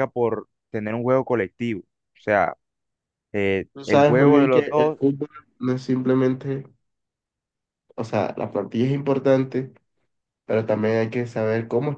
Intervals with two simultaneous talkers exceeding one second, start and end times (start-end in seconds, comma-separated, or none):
3.8-5.0